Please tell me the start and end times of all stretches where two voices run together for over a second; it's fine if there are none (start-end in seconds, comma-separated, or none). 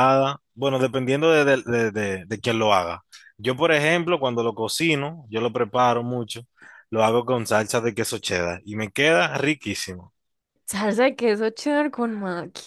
none